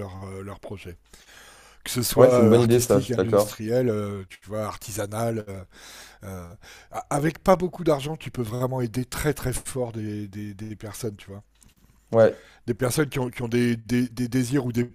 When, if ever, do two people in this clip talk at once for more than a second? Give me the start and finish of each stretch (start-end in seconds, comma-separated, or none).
2.1-3.6